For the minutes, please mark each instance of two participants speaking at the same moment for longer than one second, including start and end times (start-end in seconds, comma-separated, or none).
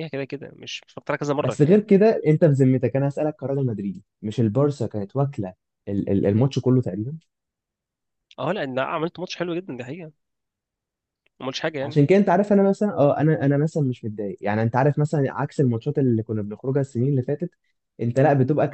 none